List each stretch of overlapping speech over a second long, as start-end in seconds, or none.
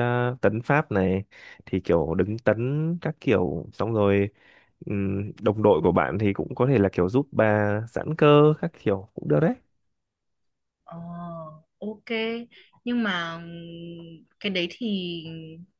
none